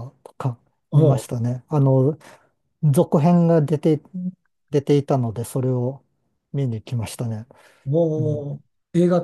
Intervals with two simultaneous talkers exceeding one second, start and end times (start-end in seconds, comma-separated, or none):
none